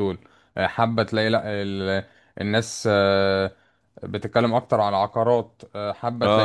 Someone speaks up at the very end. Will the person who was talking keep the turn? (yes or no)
no